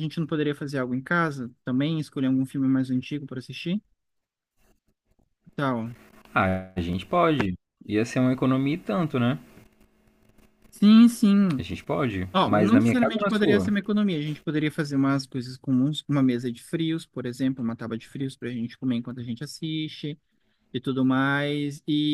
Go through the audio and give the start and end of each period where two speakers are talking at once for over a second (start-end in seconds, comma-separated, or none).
12.3-13.7